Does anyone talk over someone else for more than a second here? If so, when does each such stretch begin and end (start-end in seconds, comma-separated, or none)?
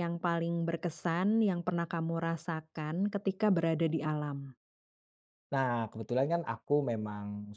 none